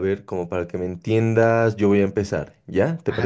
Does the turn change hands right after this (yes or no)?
yes